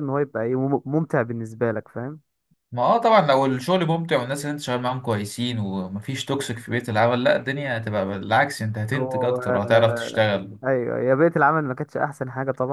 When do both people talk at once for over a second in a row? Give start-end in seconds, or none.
8.9-10.2